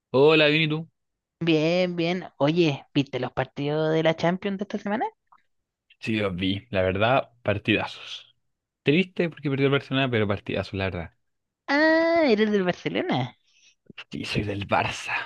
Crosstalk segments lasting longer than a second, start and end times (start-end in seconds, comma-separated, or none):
none